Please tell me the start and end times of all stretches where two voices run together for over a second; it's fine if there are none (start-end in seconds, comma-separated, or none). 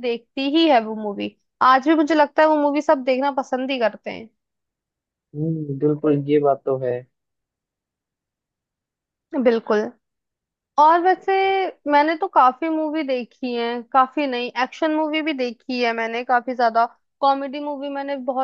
none